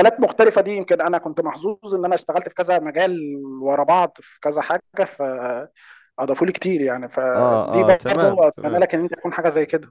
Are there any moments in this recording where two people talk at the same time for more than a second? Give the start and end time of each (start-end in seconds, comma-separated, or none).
7.3-8.9